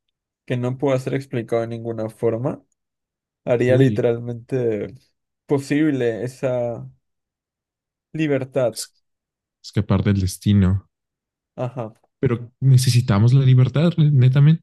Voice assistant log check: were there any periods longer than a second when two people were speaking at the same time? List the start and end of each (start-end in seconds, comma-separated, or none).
none